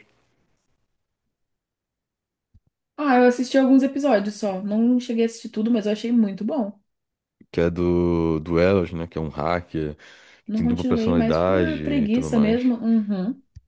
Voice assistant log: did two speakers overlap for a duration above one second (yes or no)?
yes